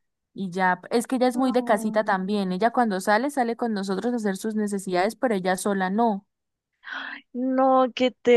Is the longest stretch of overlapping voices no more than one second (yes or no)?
no